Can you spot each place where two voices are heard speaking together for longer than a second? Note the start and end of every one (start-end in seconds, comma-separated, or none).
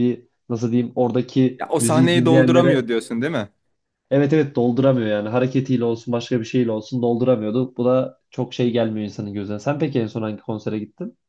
1.6-2.9